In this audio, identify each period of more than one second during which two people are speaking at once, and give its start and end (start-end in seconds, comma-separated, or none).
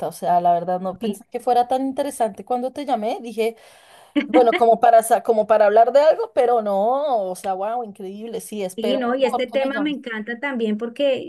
8.8-10.0